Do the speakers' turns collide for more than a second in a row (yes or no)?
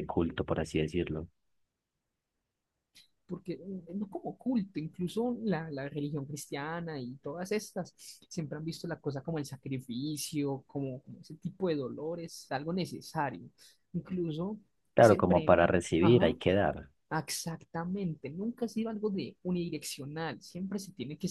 yes